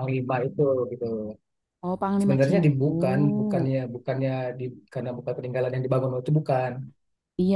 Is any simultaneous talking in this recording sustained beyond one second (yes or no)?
yes